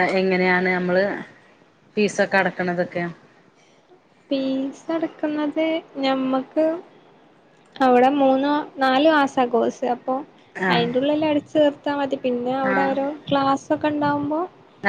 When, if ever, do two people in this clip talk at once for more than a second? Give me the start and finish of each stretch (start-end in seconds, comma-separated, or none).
none